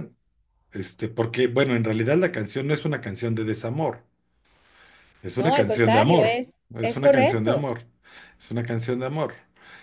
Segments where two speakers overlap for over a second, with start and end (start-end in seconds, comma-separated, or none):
5.4-7.7